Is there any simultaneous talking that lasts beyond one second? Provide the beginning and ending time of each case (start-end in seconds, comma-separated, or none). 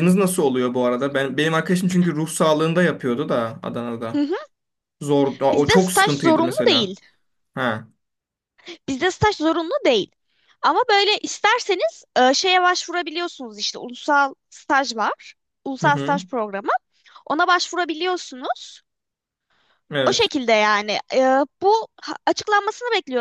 5.5-6.9